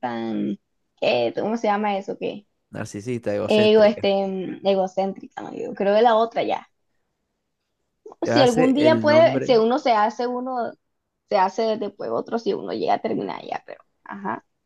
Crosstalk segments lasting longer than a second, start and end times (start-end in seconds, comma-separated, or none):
8.2-9.6